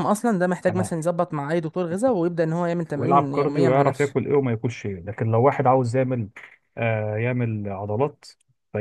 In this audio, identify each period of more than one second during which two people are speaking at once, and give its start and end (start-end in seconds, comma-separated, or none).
3.0-4.2